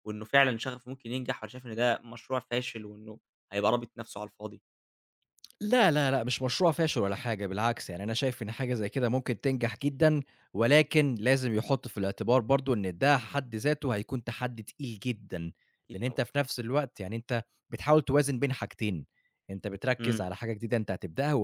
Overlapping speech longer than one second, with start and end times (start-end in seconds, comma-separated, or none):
none